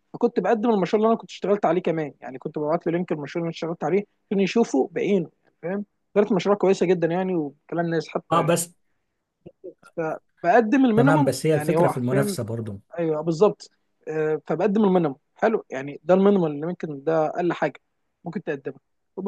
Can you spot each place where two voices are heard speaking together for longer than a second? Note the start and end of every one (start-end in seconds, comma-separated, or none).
11.0-12.4